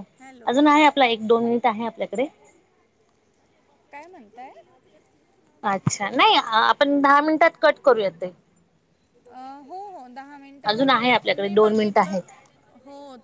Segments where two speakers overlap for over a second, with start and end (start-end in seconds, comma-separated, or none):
10.7-12.3